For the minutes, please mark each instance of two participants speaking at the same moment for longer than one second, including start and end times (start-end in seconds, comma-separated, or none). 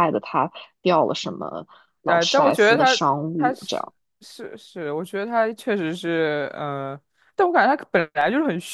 2.1-3.9